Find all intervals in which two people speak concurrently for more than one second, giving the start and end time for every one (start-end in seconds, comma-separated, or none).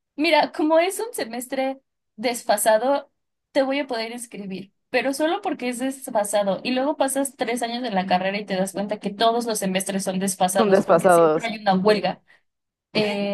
10.6-12.1